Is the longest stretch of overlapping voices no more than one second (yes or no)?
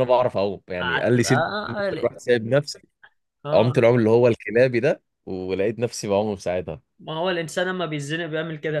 no